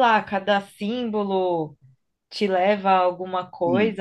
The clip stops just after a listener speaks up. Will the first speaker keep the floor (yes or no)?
no